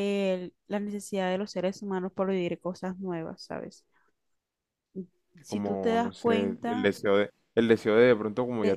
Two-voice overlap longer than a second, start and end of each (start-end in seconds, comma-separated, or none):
5.5-6.9